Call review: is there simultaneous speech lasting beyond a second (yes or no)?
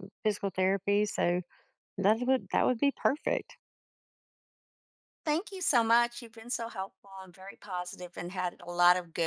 no